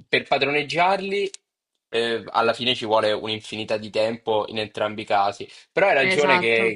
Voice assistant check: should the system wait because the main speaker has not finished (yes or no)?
yes